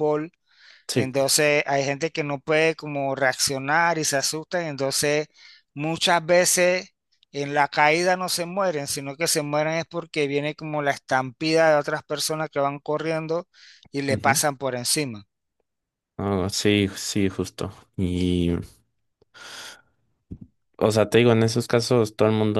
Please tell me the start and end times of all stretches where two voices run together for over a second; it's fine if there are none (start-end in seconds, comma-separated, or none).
none